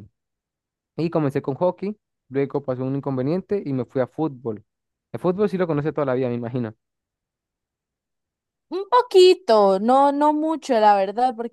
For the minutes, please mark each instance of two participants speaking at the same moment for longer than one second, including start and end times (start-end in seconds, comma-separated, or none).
none